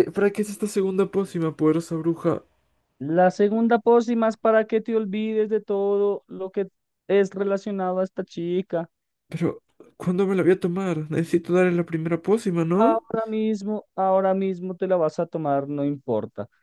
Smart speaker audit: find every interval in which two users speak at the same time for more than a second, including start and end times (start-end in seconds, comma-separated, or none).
none